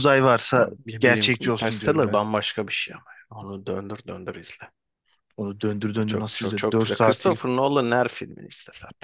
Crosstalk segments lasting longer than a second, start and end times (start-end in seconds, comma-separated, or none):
0.5-2.2, 6.0-7.4